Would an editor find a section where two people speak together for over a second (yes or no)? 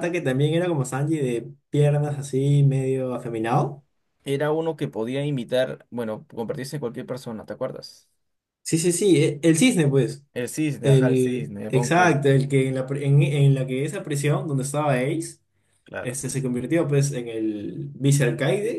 yes